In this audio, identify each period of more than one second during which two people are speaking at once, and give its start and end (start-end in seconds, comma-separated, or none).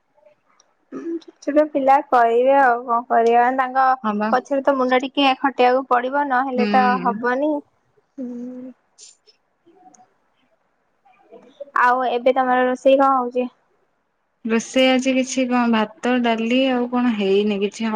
none